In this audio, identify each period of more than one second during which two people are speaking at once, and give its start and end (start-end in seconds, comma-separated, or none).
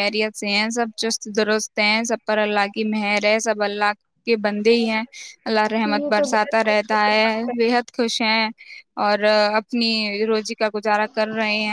5.8-7.5